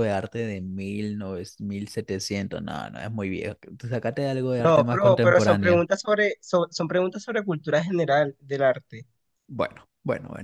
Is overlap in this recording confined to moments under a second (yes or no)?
no